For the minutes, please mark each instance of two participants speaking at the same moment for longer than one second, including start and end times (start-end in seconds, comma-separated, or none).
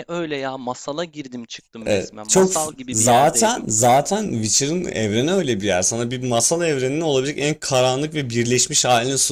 1.9-3.6